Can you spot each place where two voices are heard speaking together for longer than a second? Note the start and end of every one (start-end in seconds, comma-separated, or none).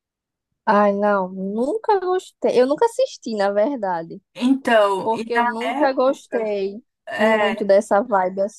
5.0-6.4